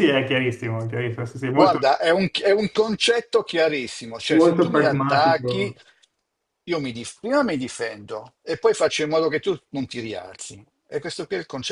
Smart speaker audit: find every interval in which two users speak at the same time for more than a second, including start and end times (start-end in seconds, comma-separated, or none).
4.3-5.8